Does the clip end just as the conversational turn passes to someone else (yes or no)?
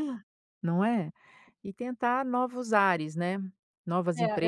yes